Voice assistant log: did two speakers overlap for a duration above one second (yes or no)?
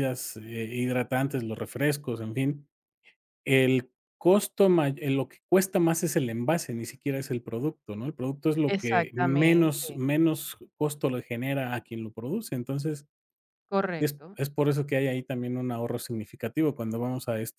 yes